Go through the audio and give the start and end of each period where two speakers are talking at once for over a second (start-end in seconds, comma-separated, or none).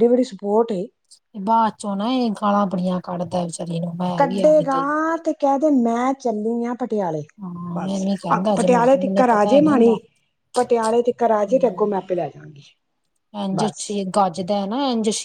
7.7-10.0